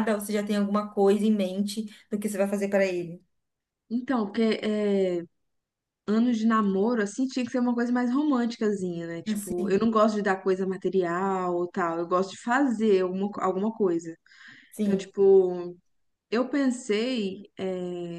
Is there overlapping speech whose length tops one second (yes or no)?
no